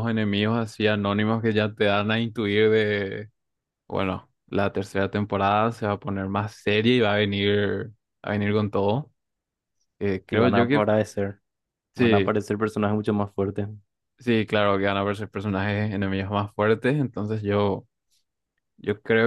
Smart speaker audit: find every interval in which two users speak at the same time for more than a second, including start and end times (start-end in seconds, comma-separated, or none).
none